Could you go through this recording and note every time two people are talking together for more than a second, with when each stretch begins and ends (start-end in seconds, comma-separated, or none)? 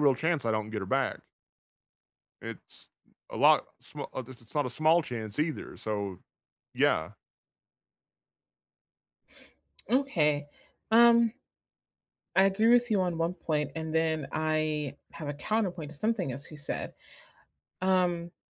none